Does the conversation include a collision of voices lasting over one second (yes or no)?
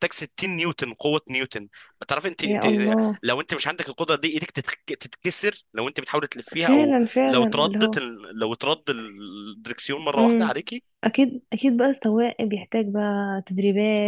yes